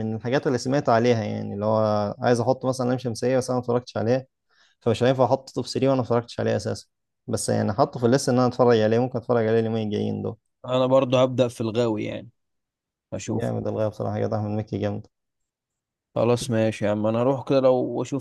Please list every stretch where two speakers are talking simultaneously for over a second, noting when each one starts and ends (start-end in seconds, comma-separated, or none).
none